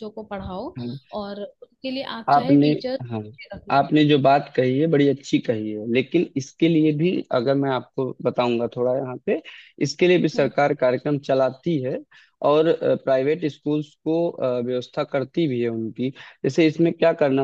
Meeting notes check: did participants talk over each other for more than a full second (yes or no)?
no